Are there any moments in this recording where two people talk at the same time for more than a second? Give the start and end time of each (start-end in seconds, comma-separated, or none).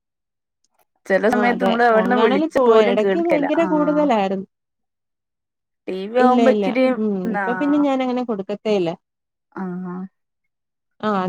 1.3-3.7